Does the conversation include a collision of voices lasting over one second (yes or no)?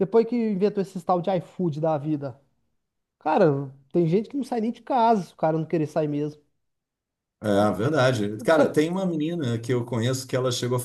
no